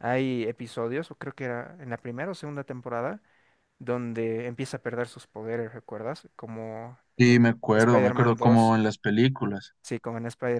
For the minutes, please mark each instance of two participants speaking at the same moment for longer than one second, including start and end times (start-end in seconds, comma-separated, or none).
7.2-8.8